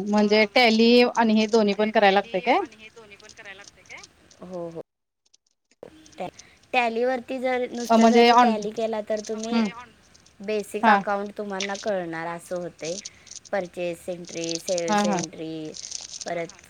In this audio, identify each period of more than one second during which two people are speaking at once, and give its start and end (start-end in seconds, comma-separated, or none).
none